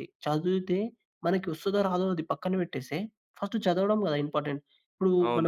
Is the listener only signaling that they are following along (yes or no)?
no